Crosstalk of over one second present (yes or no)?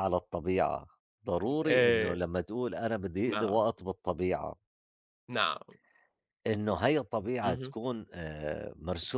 no